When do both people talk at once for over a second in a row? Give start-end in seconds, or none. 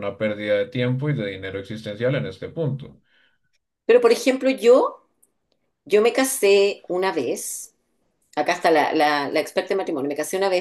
none